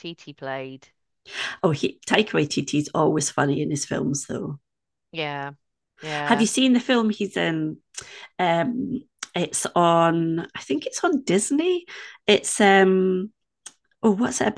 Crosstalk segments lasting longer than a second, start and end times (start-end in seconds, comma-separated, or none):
none